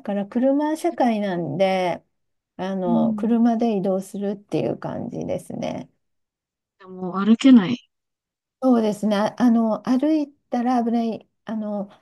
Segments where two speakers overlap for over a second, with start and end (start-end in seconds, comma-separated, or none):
none